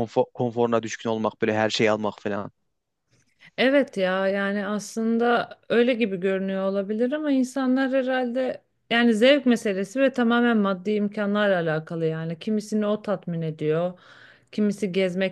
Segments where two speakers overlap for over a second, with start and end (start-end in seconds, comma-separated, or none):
none